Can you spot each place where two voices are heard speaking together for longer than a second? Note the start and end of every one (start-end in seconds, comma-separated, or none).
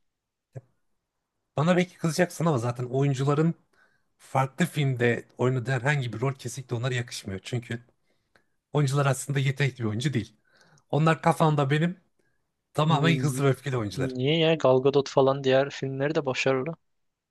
none